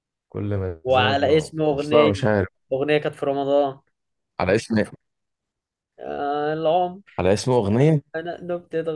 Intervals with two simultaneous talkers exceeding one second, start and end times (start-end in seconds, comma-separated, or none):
0.8-2.1